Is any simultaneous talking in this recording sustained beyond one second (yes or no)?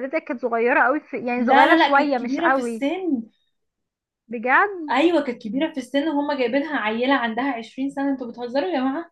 yes